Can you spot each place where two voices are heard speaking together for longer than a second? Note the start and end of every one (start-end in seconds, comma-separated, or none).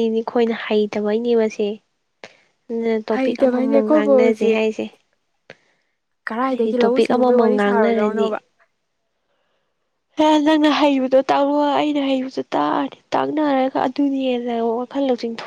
3.1-4.6, 6.5-8.3